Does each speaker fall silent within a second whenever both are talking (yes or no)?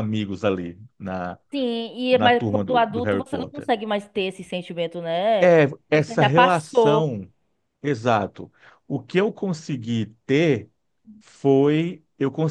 no